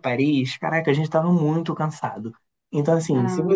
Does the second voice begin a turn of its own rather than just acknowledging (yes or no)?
no